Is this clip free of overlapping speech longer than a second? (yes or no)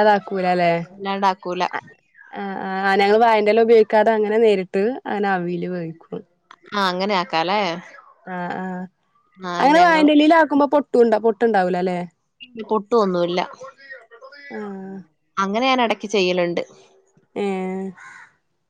yes